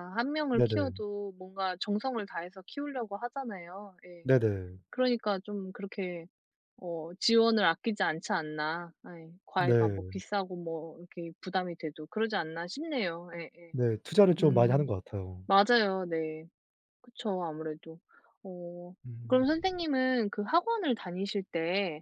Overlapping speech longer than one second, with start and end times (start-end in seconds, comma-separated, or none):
none